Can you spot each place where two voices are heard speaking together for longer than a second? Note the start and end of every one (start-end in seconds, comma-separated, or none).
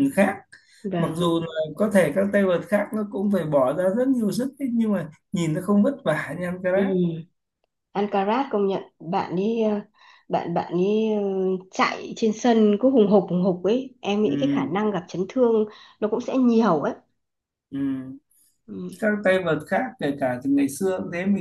none